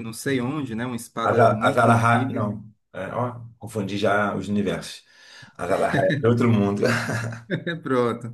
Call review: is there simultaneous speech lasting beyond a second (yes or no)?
yes